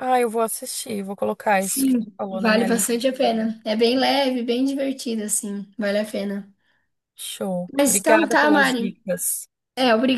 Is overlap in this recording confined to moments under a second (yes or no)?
no